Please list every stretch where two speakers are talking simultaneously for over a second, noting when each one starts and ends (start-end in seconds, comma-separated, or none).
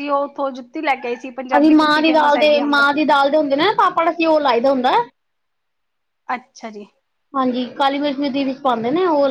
1.6-3.0